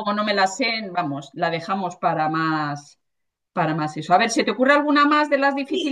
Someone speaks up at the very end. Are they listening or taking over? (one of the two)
taking over